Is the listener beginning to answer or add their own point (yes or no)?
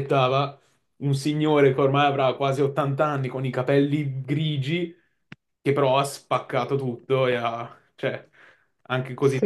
yes